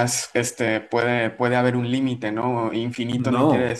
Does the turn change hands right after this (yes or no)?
no